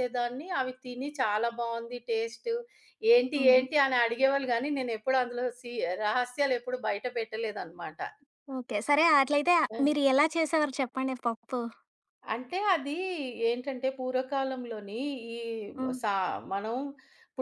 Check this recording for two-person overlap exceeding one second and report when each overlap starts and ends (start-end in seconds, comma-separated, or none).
none